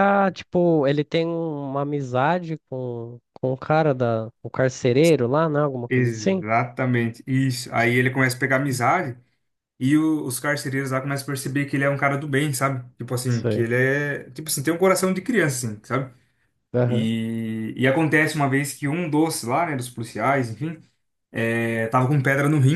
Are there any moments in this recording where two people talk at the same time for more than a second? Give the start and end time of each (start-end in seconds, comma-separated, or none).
none